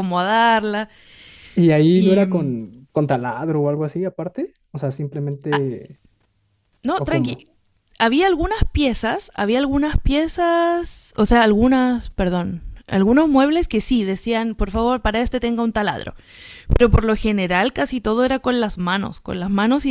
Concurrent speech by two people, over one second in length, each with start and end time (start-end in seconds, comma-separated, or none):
none